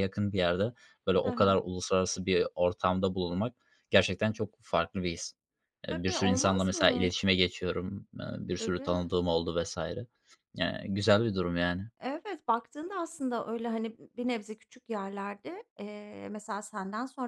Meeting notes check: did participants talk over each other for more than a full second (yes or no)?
yes